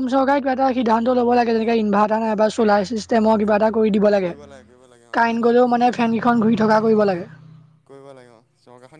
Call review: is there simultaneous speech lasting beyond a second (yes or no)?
yes